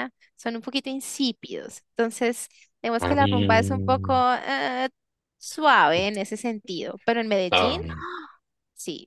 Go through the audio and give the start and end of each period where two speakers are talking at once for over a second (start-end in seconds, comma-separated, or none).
3.0-4.2